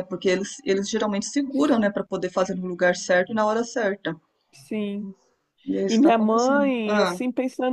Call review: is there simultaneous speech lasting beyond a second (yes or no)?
yes